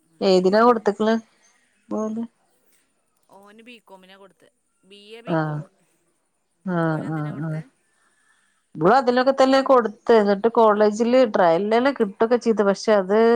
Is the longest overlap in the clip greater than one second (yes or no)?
no